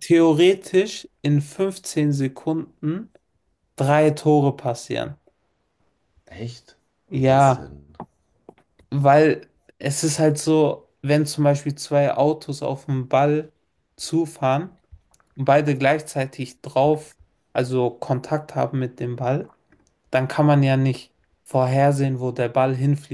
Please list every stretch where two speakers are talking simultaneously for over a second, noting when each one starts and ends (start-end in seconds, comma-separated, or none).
none